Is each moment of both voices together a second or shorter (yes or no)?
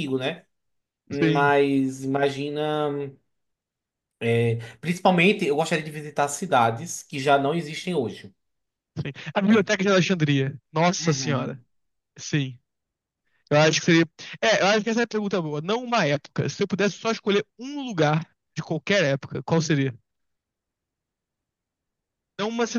yes